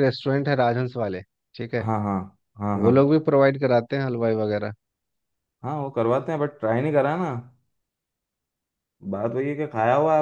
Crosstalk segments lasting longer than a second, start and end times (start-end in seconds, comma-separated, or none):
none